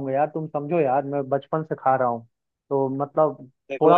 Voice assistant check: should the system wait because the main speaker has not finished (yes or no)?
yes